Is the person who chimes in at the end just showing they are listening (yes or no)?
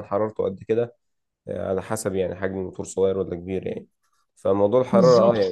yes